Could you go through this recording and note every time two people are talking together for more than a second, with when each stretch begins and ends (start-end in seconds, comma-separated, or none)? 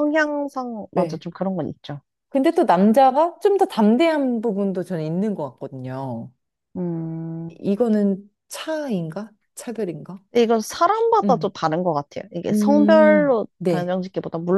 12.5-13.9